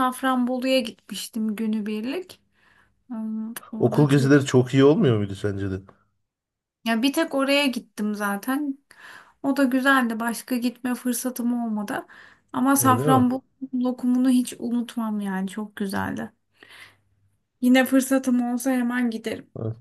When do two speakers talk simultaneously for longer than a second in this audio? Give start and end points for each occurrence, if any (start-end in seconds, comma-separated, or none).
none